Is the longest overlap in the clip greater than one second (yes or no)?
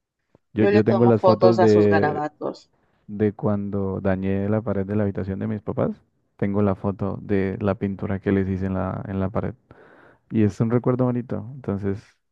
yes